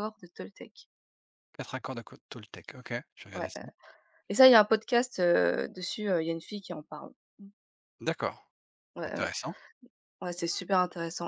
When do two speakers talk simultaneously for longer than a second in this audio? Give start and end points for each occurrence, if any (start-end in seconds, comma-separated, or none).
none